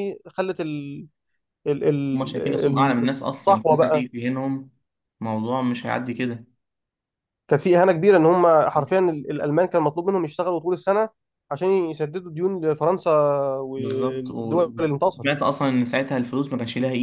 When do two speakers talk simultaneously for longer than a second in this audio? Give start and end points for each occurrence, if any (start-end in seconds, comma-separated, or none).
2.1-4.1, 13.8-15.3